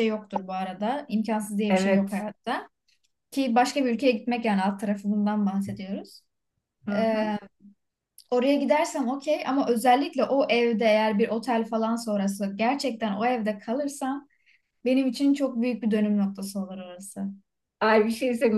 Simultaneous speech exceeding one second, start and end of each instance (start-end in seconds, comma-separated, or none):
none